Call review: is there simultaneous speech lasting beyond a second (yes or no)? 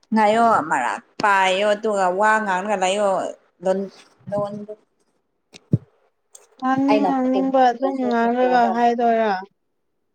yes